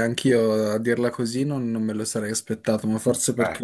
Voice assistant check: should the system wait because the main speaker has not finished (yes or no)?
yes